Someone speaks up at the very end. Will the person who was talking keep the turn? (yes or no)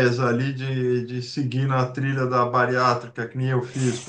no